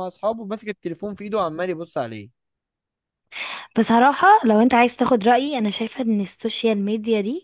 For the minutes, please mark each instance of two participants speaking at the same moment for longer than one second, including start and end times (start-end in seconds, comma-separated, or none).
none